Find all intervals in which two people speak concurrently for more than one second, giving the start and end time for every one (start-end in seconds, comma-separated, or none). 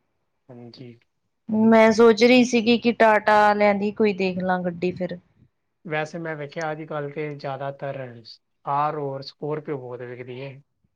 none